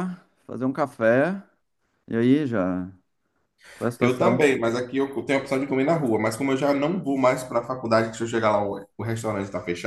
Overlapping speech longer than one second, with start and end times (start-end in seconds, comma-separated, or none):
none